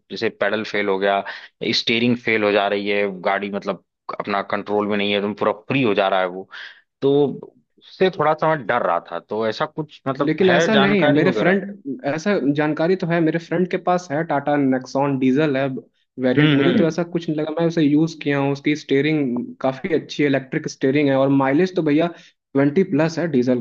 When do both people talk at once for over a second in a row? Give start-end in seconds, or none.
10.2-11.5